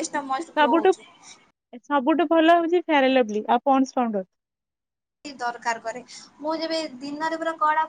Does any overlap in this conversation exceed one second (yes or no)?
no